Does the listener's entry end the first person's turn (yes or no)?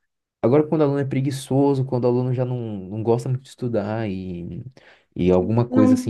yes